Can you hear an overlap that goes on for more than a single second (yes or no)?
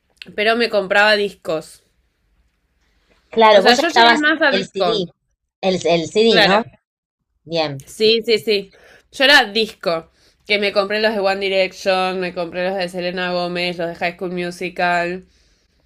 yes